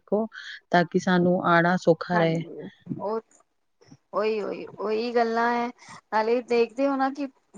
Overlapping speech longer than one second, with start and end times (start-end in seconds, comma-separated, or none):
none